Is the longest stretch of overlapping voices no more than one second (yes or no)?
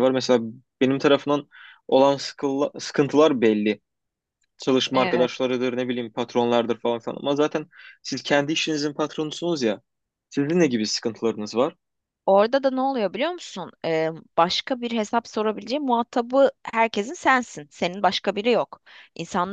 yes